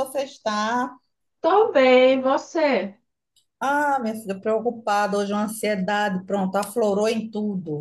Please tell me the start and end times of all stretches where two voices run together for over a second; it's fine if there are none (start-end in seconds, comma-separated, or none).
none